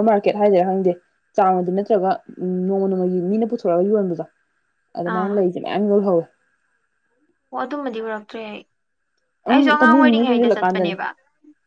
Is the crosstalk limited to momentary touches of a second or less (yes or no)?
no